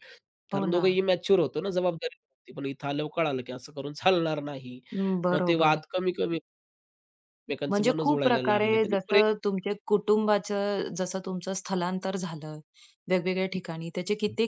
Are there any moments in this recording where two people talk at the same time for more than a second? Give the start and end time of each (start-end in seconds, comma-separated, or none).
7.7-9.2